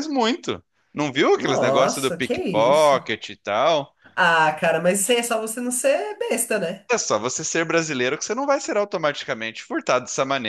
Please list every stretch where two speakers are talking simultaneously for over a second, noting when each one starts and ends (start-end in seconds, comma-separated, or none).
1.4-3.0